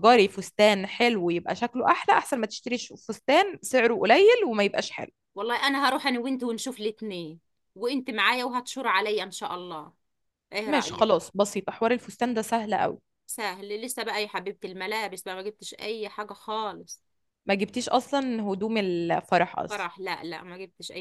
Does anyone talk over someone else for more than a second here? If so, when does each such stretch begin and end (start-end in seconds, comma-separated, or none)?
none